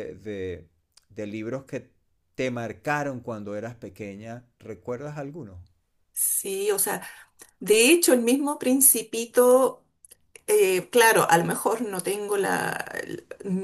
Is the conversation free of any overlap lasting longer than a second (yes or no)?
yes